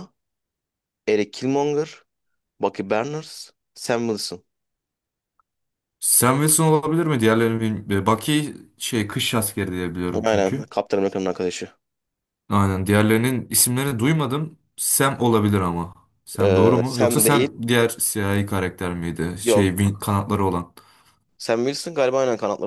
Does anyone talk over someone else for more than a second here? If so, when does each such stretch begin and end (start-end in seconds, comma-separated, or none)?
16.4-17.6